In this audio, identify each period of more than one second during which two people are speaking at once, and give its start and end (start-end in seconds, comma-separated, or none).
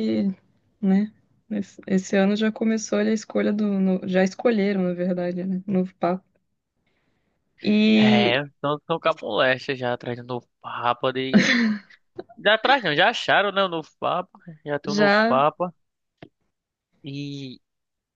none